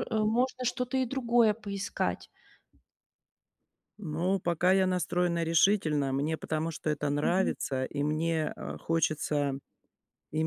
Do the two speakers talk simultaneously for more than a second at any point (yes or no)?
no